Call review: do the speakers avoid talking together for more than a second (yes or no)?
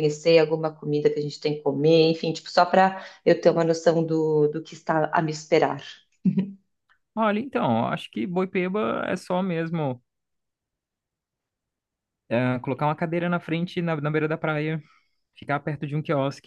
yes